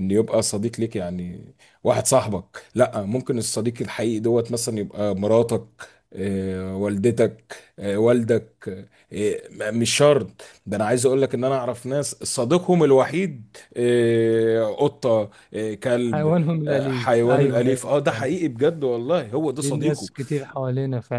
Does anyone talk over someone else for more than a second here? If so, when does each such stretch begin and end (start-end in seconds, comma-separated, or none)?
16.1-18.3